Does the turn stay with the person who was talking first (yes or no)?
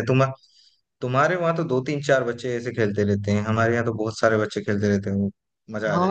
no